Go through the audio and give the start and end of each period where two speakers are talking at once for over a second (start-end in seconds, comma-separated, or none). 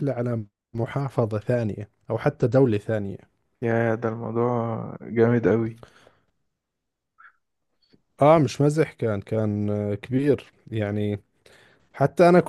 none